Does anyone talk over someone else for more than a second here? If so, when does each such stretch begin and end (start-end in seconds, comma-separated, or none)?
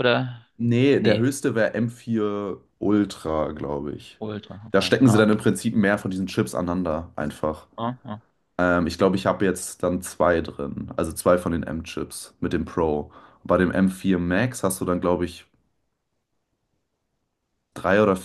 none